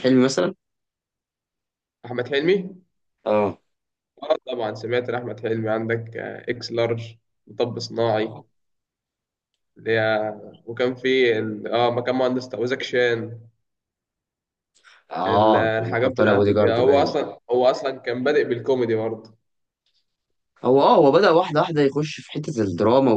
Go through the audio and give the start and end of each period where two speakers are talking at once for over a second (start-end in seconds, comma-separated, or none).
15.3-17.1